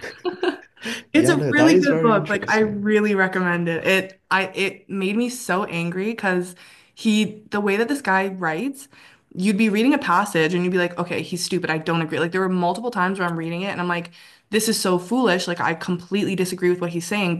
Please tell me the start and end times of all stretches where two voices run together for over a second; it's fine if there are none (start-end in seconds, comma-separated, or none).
1.1-2.9